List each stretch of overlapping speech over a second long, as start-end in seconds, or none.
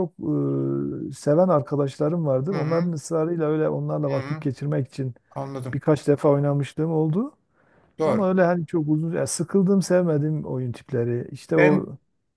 none